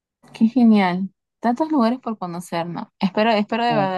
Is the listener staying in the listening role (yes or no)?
yes